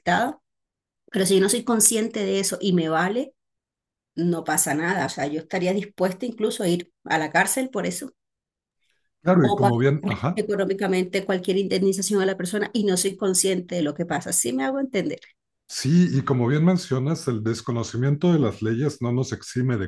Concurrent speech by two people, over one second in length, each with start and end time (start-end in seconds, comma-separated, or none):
none